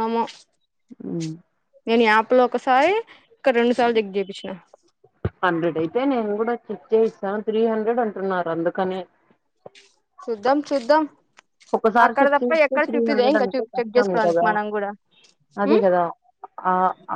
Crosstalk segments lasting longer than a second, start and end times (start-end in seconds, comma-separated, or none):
12.1-14.5